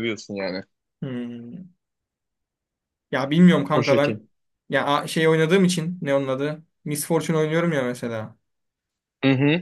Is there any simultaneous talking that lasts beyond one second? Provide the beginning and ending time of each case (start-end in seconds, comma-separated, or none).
none